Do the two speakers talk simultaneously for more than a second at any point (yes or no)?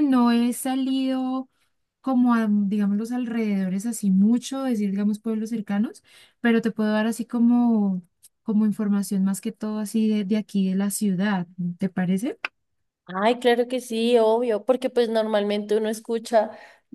no